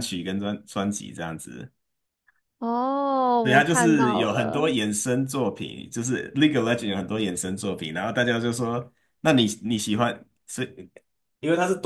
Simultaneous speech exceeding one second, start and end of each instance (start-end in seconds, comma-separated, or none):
3.4-4.7